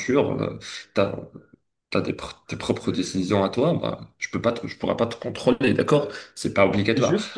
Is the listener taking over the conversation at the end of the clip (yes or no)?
yes